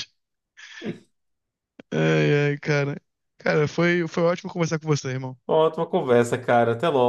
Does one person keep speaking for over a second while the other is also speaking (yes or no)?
no